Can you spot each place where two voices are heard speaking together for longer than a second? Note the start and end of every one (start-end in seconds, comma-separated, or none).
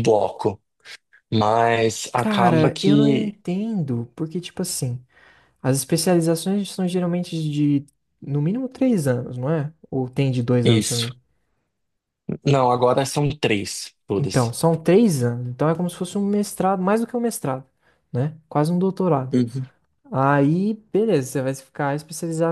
2.2-3.4